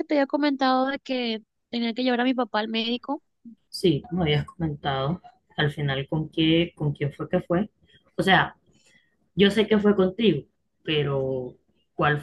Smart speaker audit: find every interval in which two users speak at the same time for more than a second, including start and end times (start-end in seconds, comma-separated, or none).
none